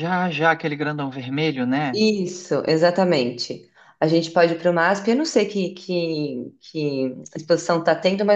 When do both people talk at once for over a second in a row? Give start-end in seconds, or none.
none